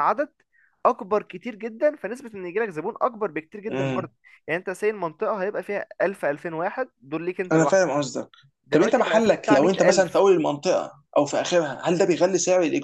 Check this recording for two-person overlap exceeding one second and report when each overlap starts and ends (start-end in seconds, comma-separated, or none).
8.7-10.2